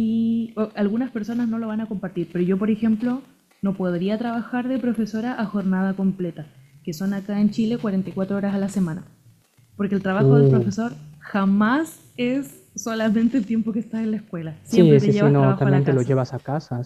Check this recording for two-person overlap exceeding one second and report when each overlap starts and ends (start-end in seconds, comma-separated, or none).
14.7-16.1